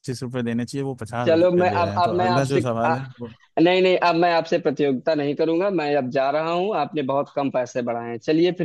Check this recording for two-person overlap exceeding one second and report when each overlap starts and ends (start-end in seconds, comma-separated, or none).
1.2-3.0